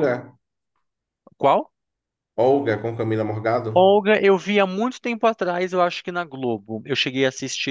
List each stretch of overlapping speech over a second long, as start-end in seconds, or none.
none